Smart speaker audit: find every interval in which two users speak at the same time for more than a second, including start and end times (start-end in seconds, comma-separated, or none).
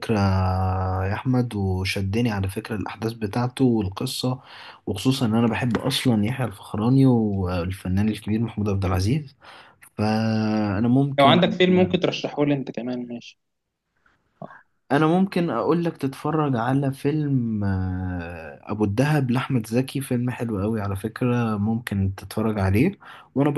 none